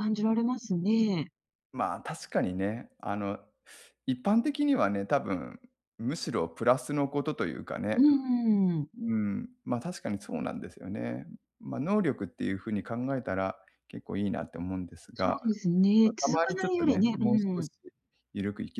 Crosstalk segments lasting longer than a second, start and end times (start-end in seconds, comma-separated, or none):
16.0-17.7